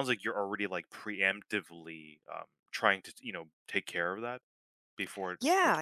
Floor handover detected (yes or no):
yes